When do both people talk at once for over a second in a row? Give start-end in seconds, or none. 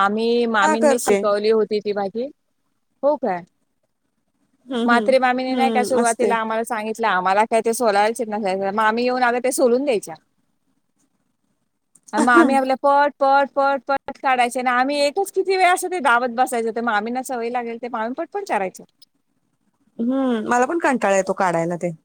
4.9-6.3